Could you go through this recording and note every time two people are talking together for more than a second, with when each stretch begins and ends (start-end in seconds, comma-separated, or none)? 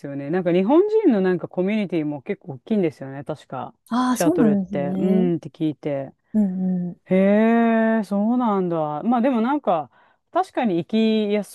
3.9-5.3